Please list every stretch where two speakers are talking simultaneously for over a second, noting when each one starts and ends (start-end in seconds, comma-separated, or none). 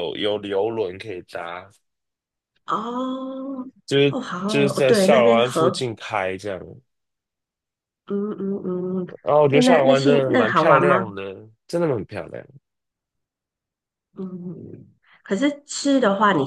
4.0-5.8, 9.5-11.1